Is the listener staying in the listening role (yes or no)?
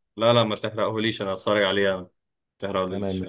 no